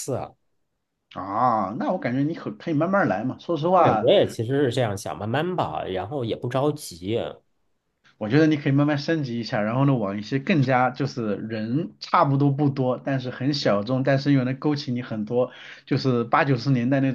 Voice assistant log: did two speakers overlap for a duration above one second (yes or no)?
no